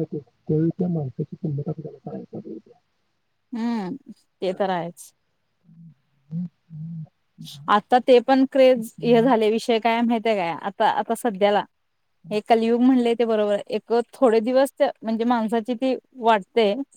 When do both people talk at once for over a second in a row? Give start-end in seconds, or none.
none